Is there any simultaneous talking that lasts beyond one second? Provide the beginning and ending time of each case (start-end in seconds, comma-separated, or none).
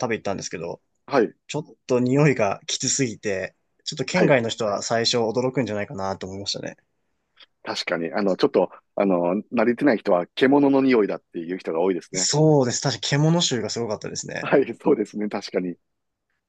none